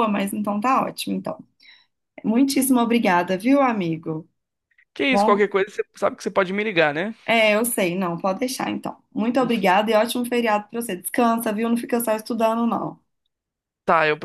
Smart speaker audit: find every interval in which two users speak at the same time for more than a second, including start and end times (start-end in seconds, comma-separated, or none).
none